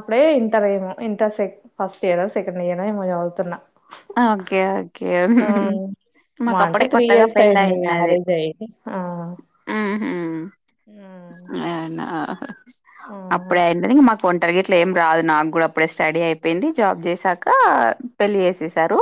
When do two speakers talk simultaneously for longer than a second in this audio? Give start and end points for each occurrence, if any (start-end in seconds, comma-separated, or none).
6.5-8.1